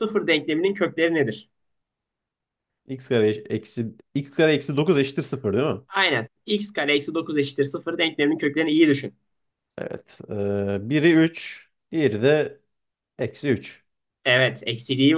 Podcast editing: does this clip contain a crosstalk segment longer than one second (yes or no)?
no